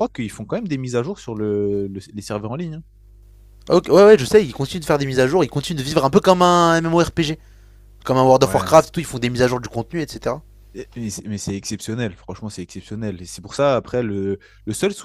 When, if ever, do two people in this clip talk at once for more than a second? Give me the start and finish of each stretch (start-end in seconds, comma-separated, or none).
none